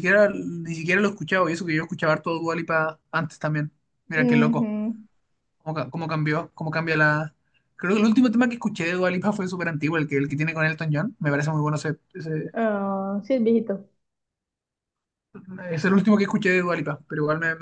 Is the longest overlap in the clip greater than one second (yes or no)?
no